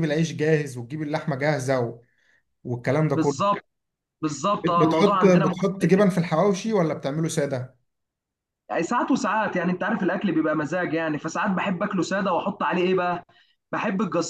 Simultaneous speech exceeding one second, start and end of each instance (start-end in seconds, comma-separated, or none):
4.6-5.9